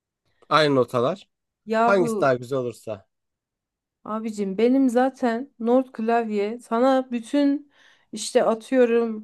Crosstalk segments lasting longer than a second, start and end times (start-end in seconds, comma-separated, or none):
none